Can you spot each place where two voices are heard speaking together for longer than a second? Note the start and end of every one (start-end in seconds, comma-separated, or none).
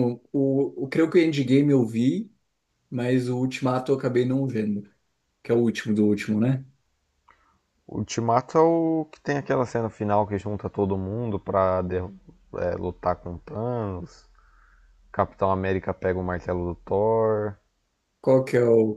none